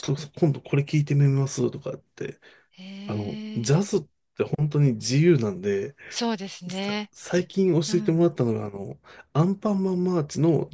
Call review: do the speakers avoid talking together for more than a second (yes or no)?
yes